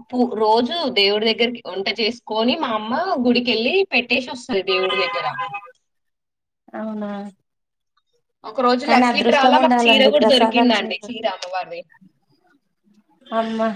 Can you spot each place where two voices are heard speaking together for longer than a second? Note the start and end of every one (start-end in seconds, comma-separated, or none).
8.9-11.1